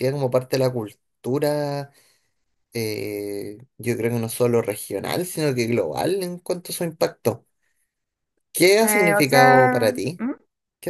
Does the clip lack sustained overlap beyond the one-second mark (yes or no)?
no